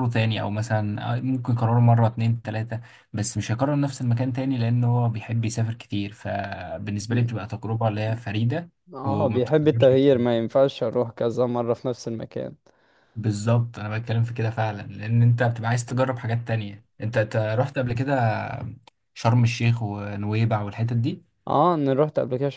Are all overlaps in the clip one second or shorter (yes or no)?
no